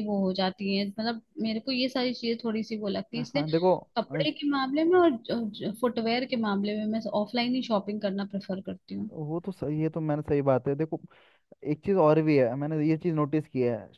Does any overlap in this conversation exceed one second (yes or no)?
no